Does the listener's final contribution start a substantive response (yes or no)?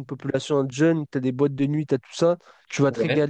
no